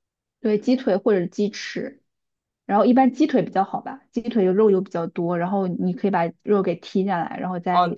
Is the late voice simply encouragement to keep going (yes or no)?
no